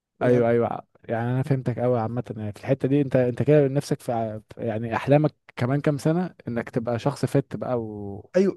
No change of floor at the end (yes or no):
no